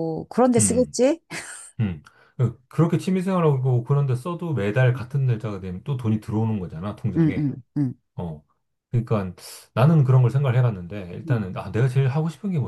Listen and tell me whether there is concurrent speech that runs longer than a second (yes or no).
no